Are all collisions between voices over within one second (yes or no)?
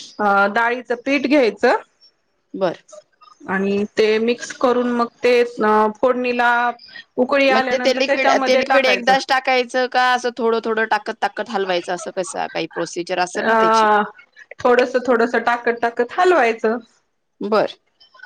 no